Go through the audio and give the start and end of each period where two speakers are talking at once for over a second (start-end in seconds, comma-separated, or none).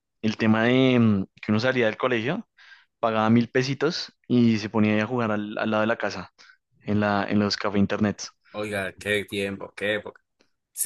none